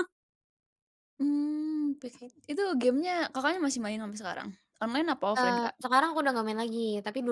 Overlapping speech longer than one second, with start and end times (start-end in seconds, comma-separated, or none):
none